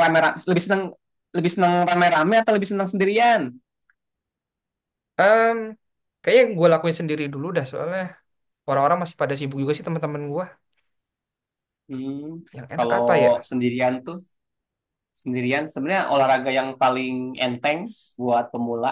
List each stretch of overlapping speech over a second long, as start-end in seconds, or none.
none